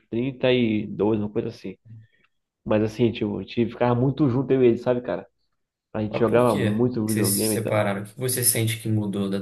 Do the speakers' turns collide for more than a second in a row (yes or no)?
yes